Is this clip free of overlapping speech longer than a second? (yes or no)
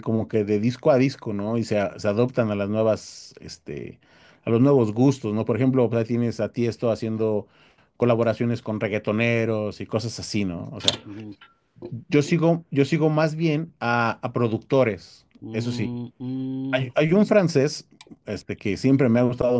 yes